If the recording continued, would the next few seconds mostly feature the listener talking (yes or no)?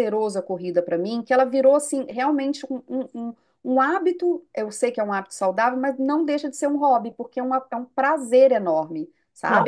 yes